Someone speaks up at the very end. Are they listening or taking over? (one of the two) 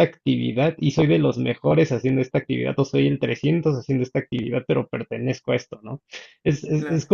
listening